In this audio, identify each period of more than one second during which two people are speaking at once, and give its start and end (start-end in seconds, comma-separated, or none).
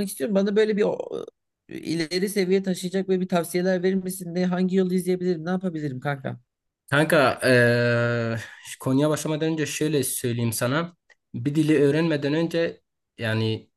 none